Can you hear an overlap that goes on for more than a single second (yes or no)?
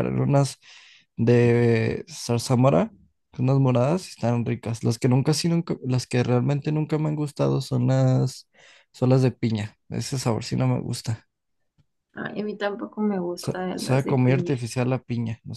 yes